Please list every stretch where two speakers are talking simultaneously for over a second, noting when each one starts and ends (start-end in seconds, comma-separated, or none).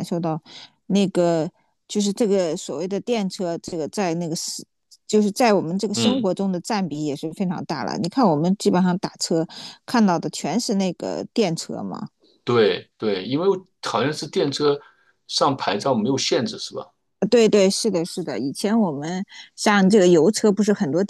none